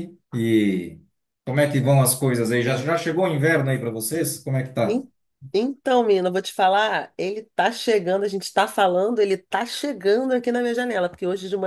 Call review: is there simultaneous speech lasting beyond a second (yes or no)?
no